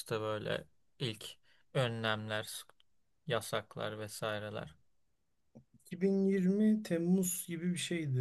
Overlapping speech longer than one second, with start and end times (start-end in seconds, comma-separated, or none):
none